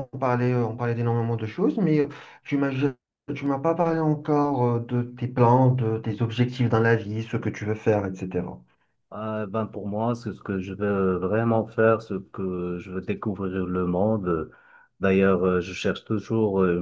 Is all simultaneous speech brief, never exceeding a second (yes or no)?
yes